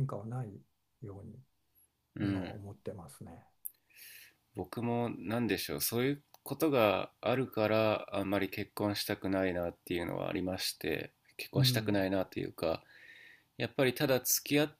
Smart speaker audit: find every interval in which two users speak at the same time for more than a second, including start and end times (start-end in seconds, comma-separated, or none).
none